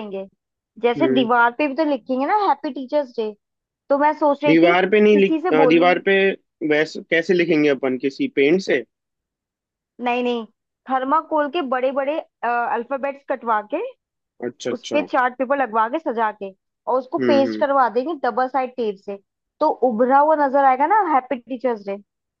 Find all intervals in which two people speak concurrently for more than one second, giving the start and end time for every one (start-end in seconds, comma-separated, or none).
4.5-5.9